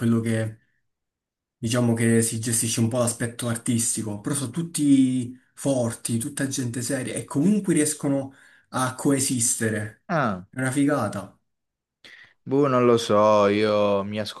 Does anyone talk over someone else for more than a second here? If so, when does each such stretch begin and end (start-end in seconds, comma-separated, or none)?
none